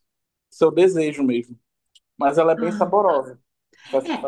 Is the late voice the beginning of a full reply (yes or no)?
yes